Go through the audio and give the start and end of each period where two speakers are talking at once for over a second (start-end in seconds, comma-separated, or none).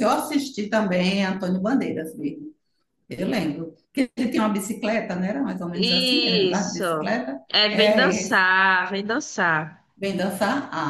5.7-8.4